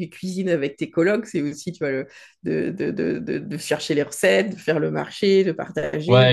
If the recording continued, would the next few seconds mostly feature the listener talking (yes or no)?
yes